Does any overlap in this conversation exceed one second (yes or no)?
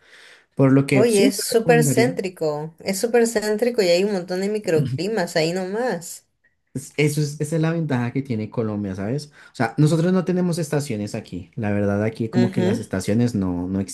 yes